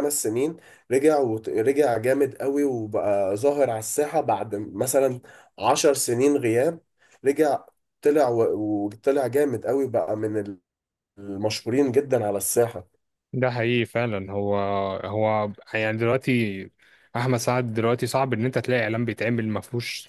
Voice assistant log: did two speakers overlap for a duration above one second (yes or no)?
no